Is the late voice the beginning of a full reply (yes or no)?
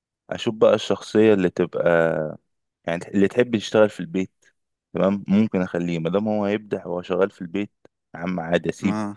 no